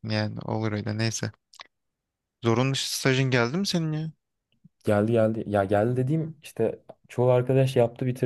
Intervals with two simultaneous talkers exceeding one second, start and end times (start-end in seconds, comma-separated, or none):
none